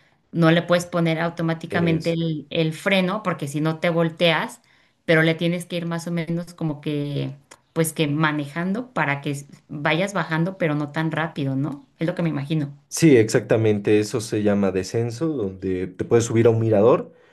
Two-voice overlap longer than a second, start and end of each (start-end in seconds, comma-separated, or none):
none